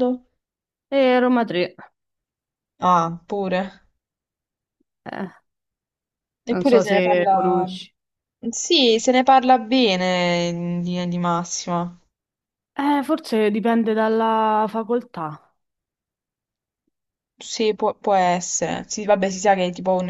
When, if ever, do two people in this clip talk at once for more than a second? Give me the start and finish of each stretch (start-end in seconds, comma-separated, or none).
6.5-7.7